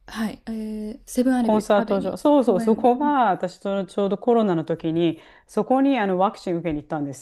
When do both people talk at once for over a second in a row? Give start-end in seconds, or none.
1.4-2.9